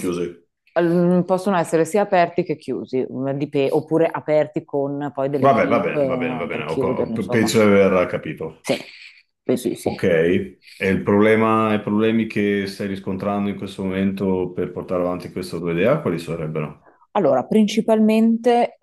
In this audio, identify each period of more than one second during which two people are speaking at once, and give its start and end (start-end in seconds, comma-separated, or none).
5.5-7.5